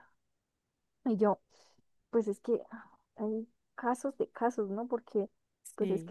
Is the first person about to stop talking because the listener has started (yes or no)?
no